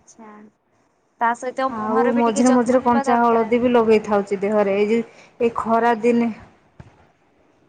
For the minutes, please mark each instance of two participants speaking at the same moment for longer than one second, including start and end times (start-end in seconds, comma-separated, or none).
1.8-3.5